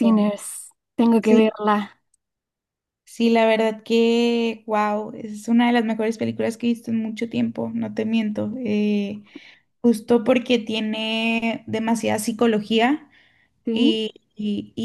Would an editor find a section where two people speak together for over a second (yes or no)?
no